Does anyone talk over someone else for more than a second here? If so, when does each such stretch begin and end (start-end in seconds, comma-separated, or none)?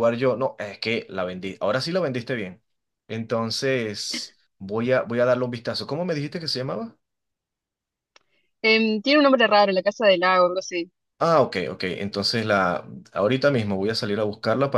none